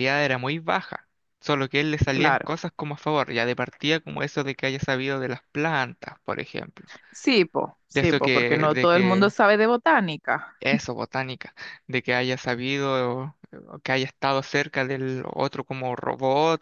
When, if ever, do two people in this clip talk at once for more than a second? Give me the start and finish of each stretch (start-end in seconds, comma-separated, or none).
7.9-9.3